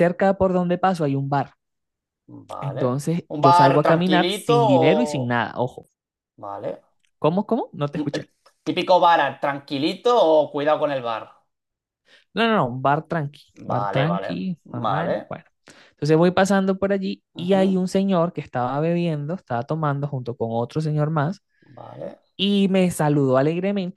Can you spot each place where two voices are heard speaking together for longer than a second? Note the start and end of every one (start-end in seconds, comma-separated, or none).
2.6-5.4, 13.6-15.4